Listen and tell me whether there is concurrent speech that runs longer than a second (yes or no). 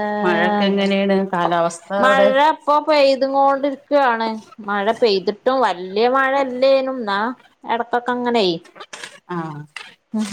no